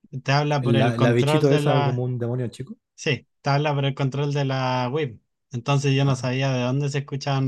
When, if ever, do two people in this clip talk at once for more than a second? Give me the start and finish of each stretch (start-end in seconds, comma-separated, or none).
0.6-2.0